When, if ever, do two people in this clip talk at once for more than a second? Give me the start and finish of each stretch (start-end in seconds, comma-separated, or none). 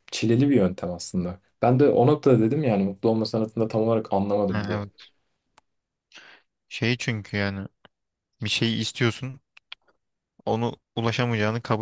none